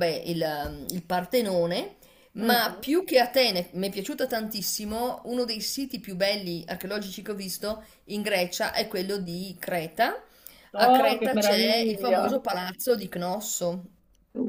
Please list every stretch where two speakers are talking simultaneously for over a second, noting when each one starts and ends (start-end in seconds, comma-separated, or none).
10.8-12.4